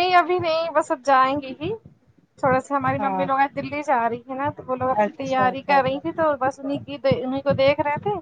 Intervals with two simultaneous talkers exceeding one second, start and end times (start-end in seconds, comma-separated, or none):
4.9-6.2